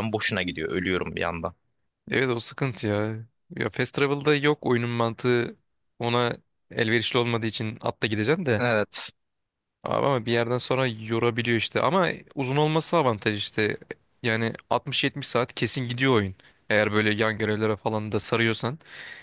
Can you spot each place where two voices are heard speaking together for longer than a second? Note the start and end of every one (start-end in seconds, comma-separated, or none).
none